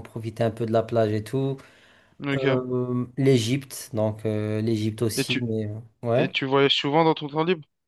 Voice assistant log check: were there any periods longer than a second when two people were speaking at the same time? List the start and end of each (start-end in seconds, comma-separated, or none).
none